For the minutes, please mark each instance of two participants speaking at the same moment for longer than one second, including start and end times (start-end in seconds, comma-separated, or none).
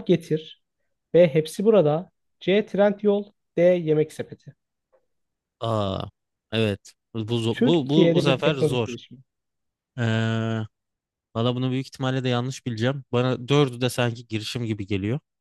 7.5-9.0